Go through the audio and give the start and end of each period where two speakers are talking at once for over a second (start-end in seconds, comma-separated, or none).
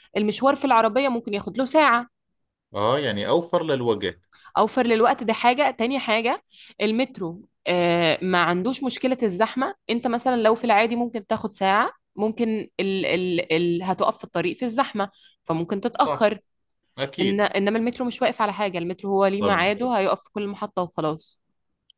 none